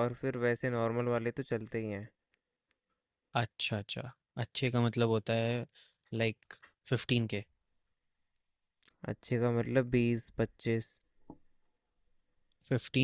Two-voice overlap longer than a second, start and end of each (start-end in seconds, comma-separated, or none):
none